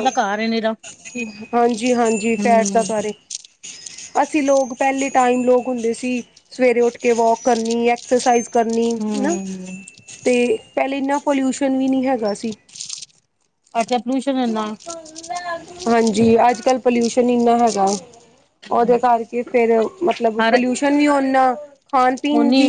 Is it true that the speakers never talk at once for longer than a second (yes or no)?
yes